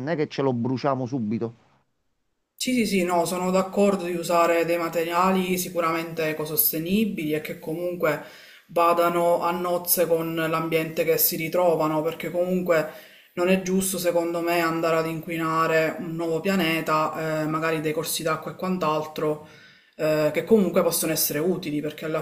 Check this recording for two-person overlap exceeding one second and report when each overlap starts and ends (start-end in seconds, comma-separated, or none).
none